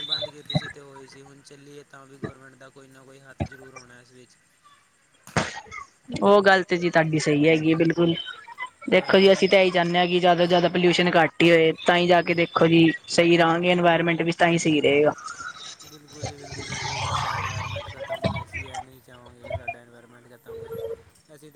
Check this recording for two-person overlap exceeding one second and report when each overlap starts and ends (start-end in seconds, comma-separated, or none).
none